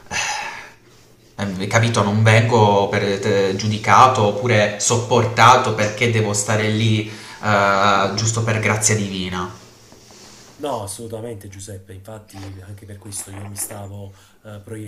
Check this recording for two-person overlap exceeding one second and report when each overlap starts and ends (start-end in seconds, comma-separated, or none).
none